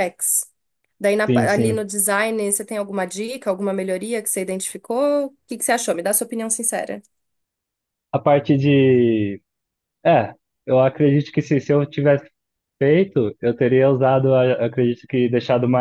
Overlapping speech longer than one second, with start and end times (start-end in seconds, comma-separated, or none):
none